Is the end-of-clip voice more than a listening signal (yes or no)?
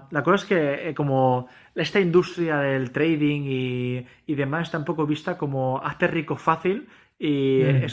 no